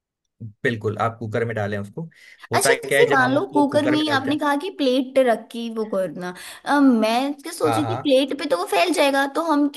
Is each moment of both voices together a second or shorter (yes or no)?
no